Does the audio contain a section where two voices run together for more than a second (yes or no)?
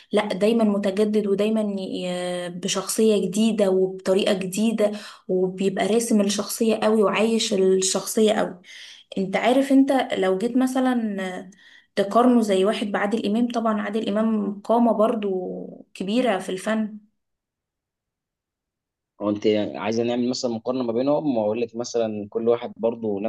no